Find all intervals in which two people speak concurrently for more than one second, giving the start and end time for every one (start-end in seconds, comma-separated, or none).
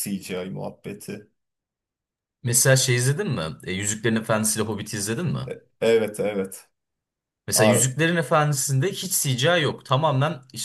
none